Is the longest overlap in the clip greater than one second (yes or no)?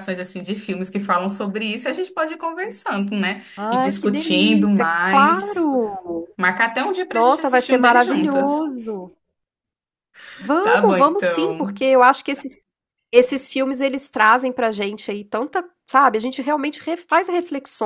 yes